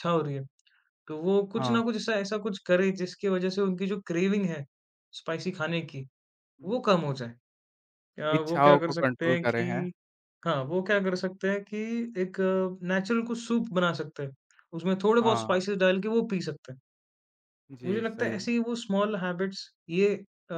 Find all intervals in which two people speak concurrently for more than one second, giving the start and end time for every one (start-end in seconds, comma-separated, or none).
8.4-9.9